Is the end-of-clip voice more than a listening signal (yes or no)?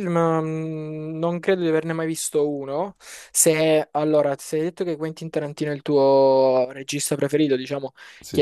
no